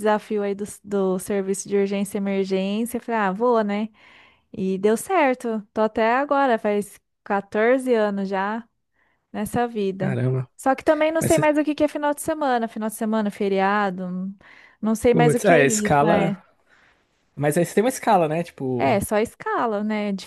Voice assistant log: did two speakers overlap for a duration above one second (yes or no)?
yes